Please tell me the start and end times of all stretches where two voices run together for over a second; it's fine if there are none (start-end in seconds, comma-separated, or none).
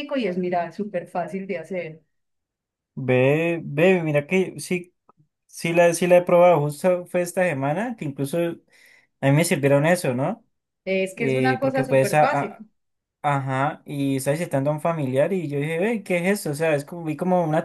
11.2-12.7